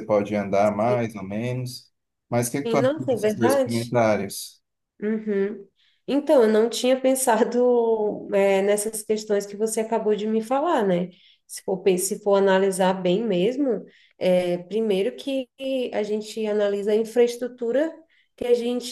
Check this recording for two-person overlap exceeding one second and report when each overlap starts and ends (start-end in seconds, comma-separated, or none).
2.6-3.9